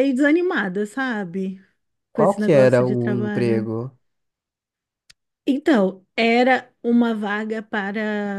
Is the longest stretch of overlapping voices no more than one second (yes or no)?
no